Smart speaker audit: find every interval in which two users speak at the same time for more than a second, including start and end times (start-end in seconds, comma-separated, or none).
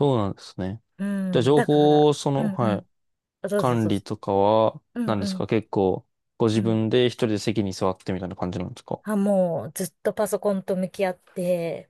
1.5-2.9